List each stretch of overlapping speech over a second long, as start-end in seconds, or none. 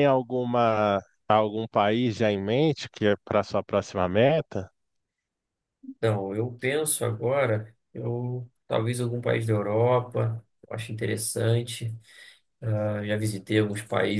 none